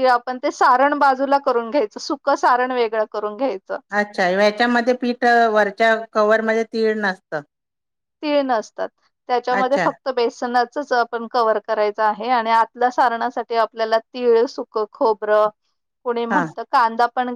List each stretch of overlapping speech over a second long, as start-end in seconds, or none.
none